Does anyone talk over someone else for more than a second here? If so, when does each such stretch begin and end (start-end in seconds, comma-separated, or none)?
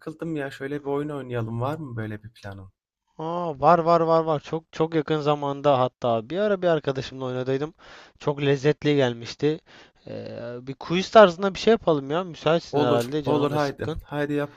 12.7-14.0